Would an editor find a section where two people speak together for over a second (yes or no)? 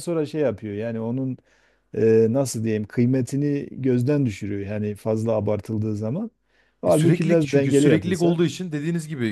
yes